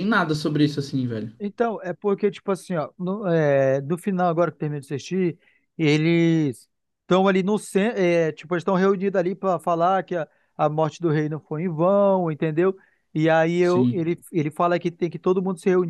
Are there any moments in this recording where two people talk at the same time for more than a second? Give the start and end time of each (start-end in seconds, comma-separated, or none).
none